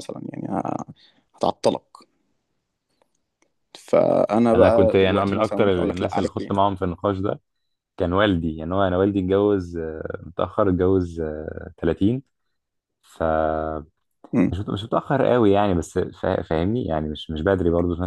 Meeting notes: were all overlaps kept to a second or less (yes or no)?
no